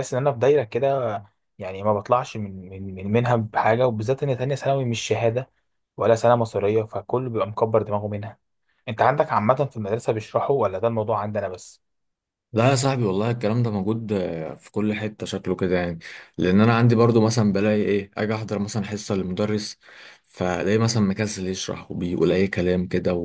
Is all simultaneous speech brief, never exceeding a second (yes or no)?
yes